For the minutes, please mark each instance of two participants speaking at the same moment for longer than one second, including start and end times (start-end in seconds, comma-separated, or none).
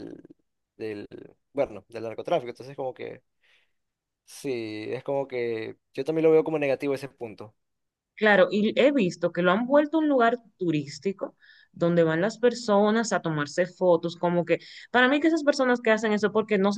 none